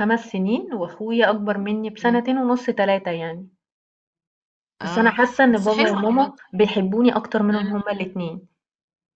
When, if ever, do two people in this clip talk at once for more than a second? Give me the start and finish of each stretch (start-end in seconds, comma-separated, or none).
4.8-6.3